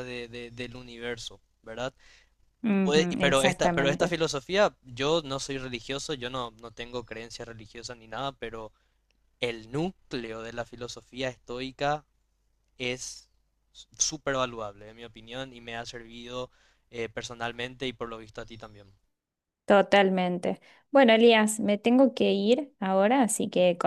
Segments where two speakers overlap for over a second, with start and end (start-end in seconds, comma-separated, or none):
2.8-4.1